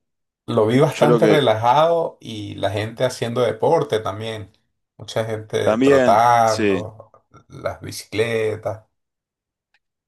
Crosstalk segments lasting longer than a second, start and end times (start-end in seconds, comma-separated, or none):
5.6-6.9